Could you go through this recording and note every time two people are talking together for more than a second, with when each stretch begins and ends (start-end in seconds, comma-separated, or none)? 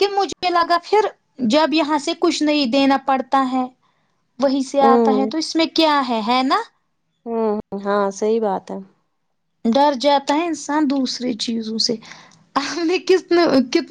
none